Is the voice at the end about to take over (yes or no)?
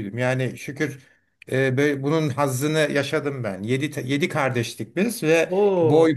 no